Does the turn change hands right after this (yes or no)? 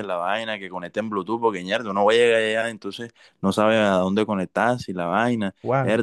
yes